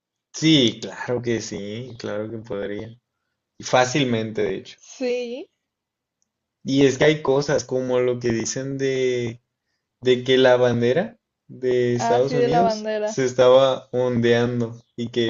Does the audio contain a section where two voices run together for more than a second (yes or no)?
yes